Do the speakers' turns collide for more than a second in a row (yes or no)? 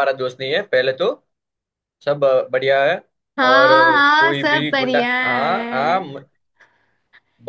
yes